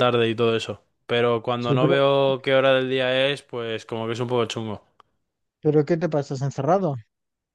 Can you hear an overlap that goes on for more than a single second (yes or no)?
no